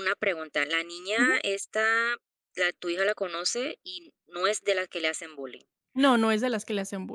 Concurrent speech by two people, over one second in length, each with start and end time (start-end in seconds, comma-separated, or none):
none